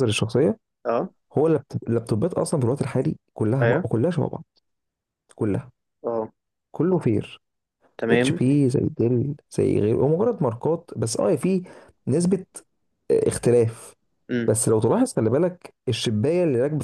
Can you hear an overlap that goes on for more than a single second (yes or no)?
no